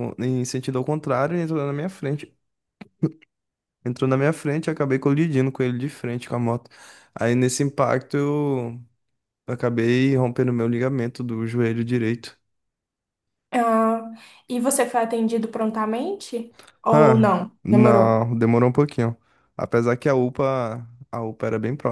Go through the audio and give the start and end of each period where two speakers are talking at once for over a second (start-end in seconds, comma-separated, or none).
16.9-18.2